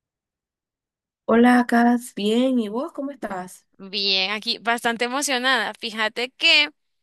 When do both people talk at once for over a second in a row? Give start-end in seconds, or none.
none